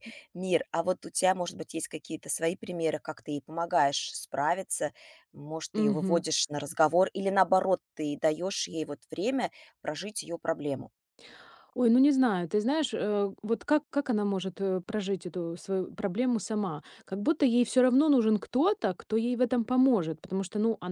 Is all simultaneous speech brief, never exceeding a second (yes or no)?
yes